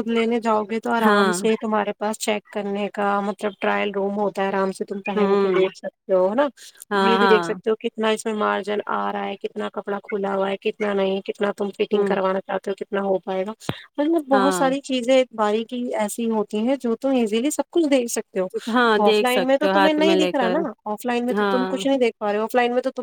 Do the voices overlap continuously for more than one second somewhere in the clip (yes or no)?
yes